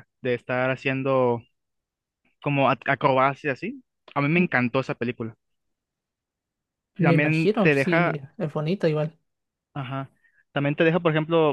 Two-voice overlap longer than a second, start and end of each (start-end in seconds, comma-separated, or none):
7.0-8.2